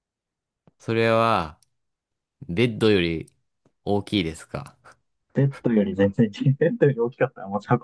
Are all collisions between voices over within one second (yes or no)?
yes